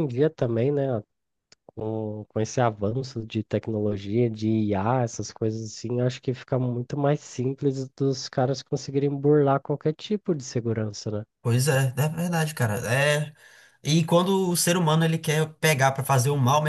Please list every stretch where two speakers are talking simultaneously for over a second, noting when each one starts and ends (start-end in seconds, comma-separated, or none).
none